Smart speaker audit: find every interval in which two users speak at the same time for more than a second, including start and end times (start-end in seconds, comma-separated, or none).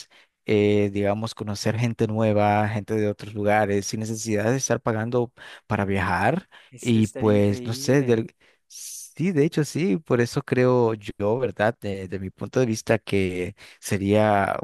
6.7-8.2